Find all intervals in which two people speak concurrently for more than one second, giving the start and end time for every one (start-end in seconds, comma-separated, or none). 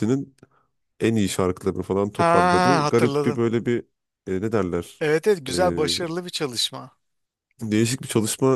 2.2-3.4